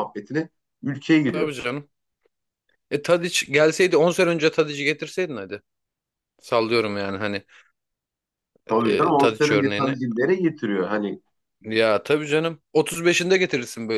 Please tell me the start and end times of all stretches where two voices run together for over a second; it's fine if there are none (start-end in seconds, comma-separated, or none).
8.7-10.0